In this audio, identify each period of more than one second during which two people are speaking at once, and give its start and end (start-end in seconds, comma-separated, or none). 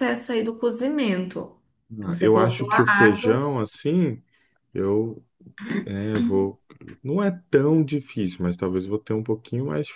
2.0-3.4